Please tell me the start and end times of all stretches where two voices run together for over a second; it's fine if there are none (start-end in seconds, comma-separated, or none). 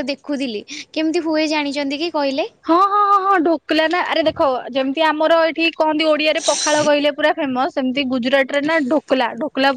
none